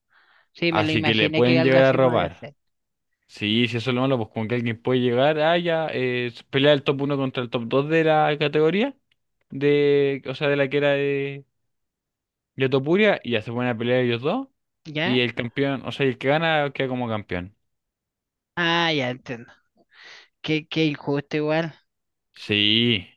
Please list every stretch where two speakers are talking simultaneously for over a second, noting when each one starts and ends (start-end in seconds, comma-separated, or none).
0.7-2.5